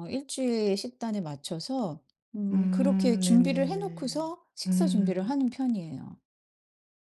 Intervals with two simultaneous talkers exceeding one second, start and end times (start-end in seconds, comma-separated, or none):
2.5-5.3